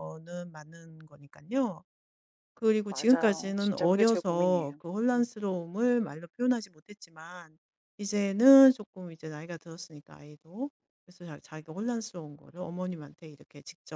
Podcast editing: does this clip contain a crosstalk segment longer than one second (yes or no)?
yes